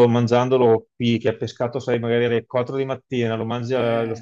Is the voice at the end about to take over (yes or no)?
no